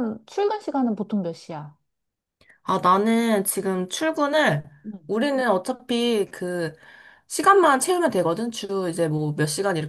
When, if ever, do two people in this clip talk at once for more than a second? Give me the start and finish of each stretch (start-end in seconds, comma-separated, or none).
none